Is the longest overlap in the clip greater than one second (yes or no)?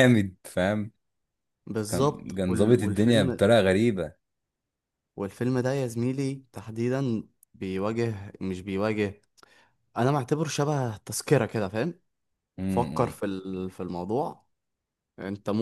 yes